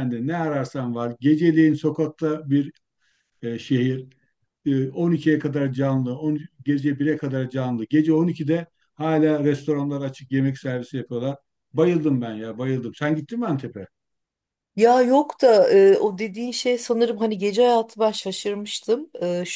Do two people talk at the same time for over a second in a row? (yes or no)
no